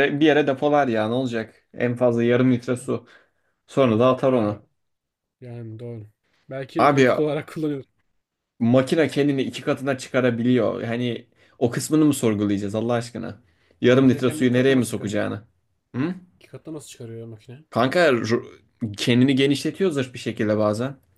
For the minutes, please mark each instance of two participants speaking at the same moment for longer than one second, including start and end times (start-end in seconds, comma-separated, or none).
13.9-15.2